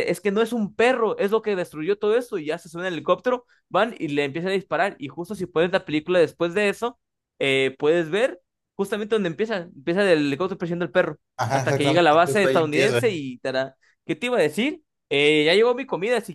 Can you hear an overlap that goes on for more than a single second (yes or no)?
yes